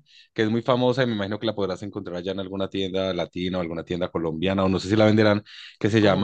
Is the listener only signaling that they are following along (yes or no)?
yes